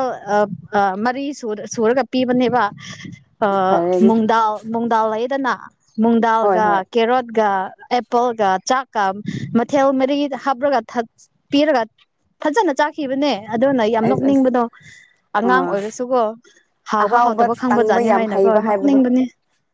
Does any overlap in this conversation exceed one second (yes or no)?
yes